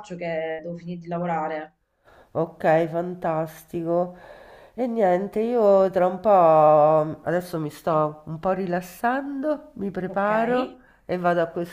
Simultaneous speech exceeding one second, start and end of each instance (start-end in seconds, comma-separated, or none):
none